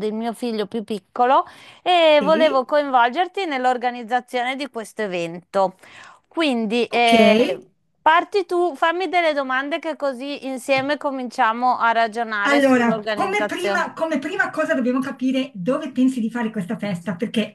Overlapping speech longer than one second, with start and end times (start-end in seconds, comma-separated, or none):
12.5-13.9